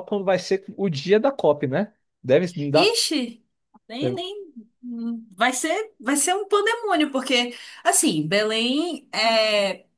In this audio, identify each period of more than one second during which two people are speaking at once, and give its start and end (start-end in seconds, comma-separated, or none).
none